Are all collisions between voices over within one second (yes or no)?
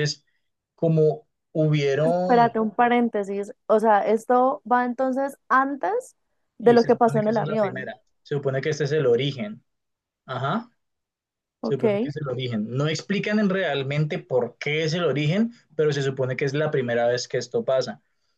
no